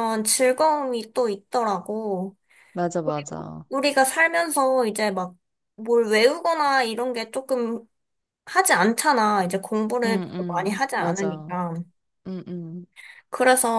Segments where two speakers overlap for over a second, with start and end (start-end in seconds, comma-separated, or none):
10.0-11.6